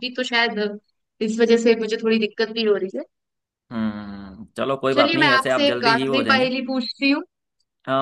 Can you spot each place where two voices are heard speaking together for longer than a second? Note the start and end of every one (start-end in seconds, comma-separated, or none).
4.9-6.5